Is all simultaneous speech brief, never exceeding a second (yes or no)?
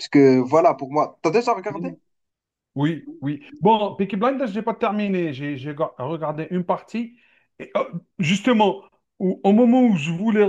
yes